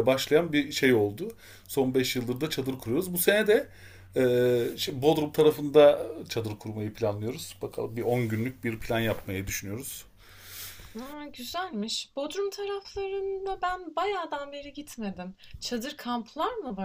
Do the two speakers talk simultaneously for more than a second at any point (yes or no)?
no